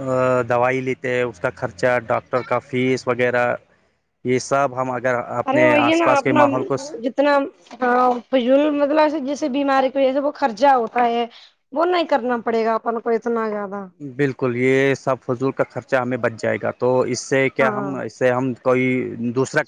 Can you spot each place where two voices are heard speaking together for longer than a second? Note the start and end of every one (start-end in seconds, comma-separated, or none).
none